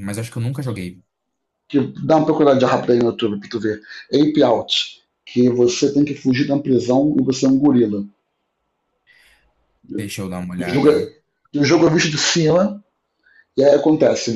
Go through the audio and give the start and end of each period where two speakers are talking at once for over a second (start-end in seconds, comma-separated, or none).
none